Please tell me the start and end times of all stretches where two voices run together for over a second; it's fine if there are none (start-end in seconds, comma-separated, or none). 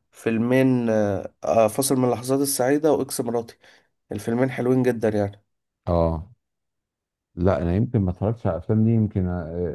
none